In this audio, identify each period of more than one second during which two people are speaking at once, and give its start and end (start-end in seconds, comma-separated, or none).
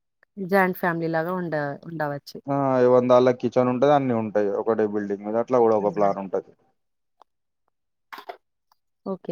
none